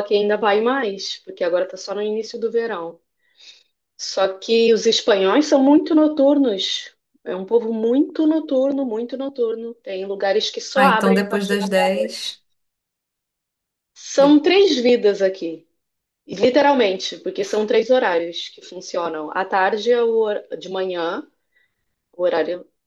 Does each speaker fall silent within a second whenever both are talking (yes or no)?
no